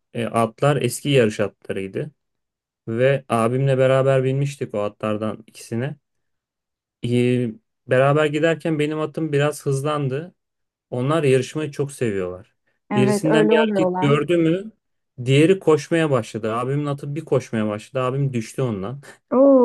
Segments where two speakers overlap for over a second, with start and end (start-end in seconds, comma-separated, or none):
12.9-14.2